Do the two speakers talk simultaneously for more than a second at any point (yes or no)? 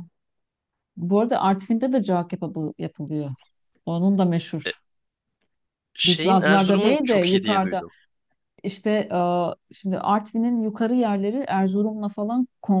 yes